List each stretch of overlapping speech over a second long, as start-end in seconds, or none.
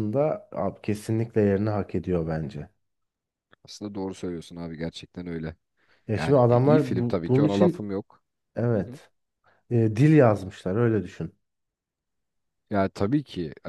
6.1-7.9